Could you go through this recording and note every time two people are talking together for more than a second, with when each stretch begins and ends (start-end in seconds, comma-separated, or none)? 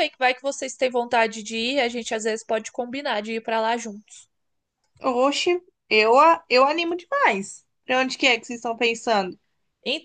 none